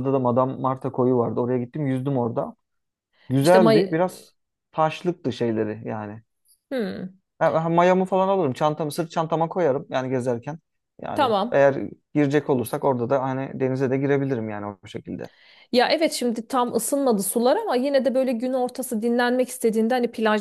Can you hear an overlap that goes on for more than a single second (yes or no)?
no